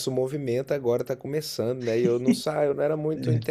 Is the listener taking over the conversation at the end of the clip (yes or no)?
no